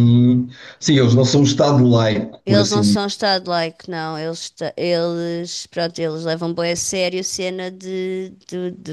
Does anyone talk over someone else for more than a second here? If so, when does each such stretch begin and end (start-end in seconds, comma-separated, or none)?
none